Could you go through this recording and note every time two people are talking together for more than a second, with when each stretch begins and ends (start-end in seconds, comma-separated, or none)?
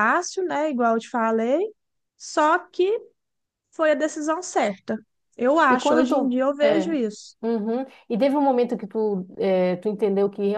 5.7-7.0